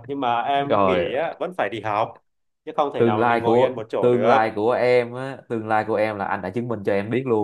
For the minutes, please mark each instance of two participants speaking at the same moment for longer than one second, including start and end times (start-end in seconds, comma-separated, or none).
3.0-4.4